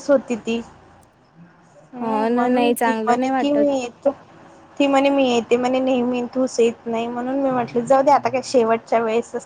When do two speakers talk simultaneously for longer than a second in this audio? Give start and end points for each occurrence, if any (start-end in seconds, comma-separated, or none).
2.0-3.7